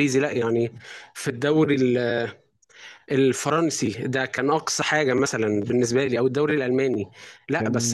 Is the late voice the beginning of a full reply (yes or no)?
no